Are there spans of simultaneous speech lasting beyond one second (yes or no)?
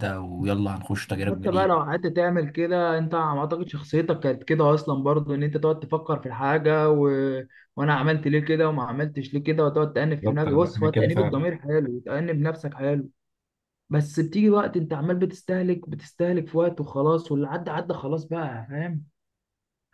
yes